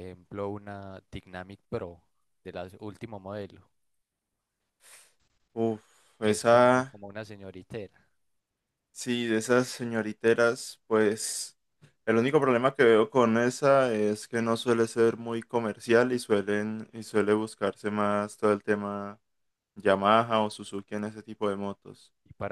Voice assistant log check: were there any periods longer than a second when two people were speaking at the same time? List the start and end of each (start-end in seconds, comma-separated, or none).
none